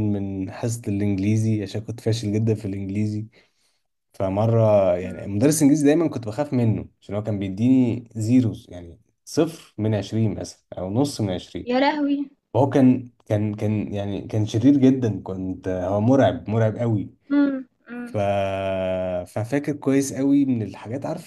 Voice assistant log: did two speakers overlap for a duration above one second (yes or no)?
no